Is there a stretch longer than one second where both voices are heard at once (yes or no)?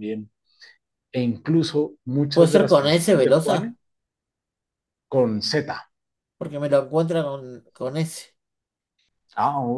yes